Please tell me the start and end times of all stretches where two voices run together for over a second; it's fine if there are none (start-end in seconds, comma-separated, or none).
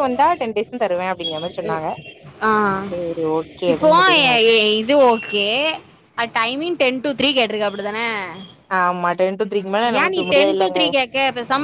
none